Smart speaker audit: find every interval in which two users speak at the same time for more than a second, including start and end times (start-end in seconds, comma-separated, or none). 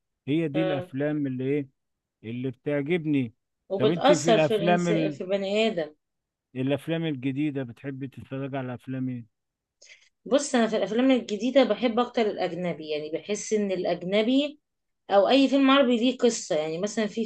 3.8-5.2